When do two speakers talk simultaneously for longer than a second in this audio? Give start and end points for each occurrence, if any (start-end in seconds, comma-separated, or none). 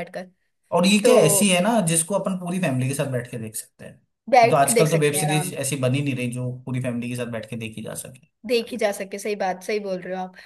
4.3-5.5